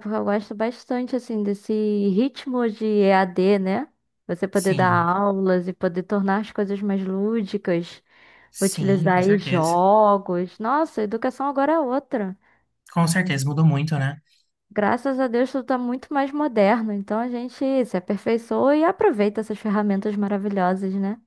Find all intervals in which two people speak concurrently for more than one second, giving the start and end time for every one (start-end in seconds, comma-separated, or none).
8.6-9.8